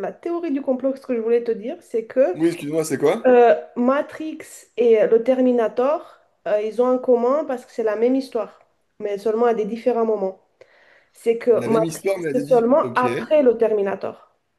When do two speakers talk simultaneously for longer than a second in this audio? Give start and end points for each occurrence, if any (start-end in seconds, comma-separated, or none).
11.5-13.1